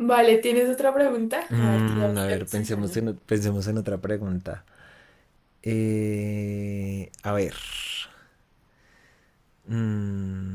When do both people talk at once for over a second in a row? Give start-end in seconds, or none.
1.5-3.0